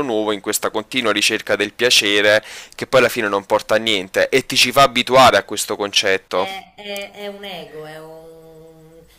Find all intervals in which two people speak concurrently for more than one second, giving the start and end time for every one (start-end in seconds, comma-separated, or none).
none